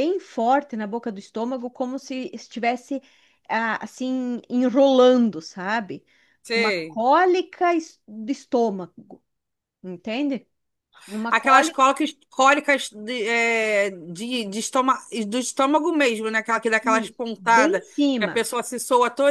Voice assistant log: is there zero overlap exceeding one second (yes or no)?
no